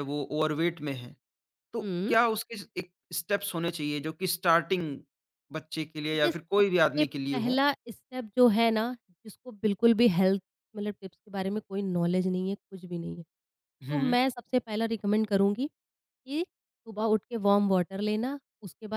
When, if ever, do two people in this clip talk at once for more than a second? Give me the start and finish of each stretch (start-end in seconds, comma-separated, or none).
6.1-7.6